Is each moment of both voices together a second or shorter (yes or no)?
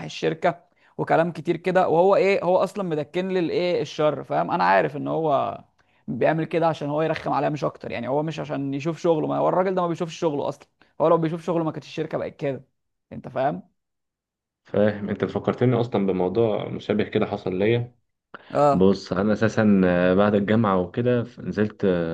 yes